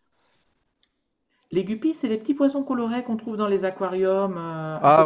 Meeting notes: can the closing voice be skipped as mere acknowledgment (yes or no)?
no